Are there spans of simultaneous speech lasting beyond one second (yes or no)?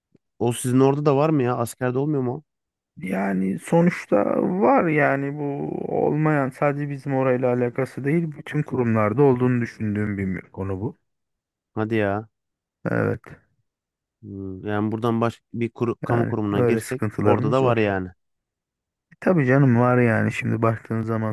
yes